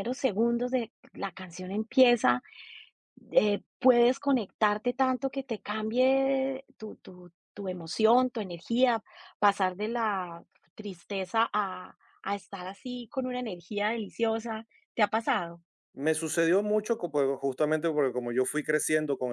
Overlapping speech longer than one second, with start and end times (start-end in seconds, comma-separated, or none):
none